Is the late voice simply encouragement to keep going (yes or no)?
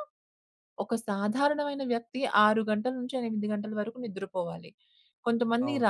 yes